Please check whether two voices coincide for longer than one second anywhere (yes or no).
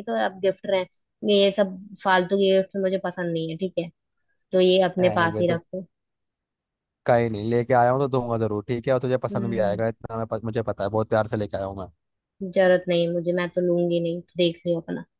no